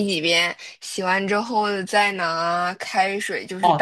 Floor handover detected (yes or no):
yes